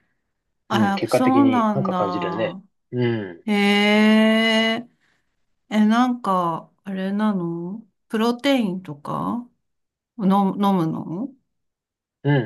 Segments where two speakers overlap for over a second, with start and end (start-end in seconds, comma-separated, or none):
0.7-2.6